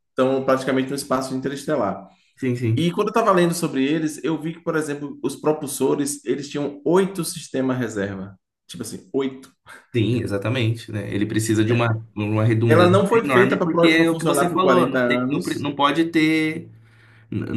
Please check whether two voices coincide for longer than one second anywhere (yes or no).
yes